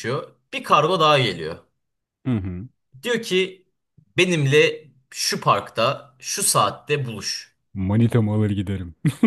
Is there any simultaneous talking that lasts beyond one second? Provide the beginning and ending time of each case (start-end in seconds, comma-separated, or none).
none